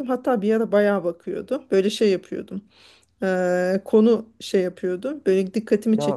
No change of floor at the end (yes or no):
yes